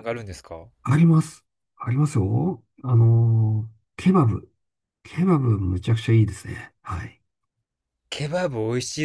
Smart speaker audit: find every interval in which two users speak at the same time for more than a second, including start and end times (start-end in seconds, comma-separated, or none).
none